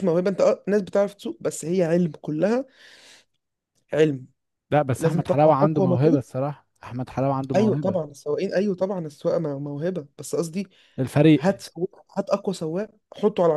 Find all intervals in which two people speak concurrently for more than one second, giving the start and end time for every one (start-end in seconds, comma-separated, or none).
5.0-6.2